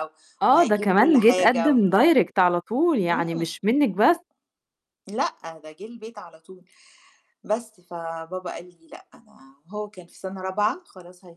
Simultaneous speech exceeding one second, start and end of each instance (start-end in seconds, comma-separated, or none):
0.5-1.8